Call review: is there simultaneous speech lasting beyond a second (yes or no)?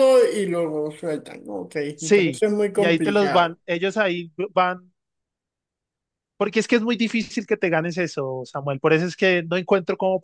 yes